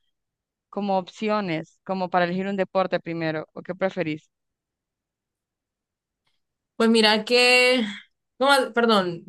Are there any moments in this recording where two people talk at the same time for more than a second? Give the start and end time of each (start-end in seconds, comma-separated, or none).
none